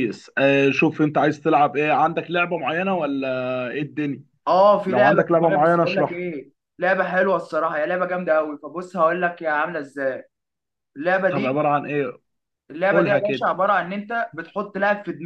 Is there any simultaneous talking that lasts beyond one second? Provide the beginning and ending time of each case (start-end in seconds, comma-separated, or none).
4.9-6.2